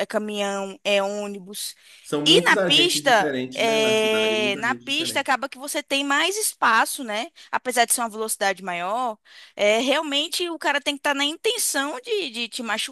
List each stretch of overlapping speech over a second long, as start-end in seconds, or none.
2.3-5.3